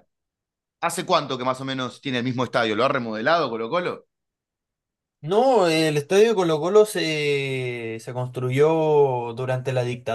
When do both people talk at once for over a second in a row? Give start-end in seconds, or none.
none